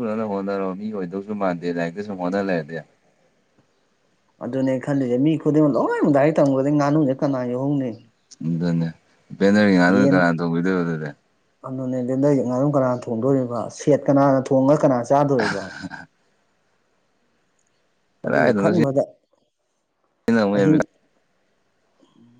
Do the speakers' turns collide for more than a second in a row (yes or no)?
no